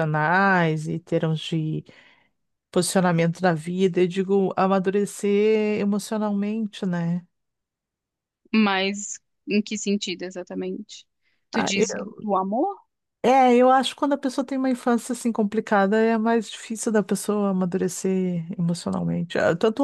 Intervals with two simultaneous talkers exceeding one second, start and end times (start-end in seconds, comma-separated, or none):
none